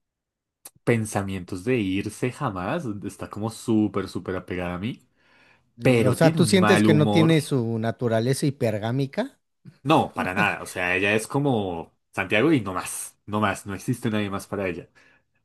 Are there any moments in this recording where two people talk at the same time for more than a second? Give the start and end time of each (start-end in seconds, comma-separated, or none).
5.8-7.3